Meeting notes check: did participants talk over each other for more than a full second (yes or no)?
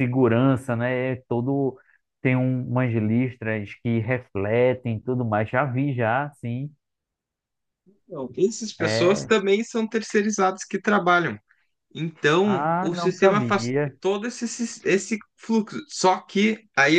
yes